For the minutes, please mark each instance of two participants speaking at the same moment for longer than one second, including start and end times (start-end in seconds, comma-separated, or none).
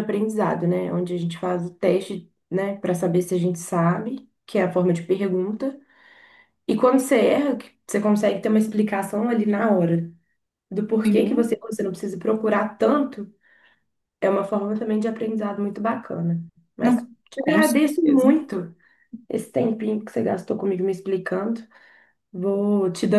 16.8-18.3